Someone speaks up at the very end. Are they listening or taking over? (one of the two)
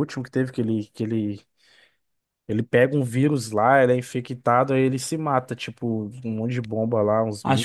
taking over